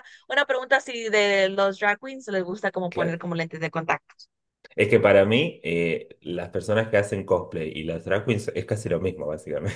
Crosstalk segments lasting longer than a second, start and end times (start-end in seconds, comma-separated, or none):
none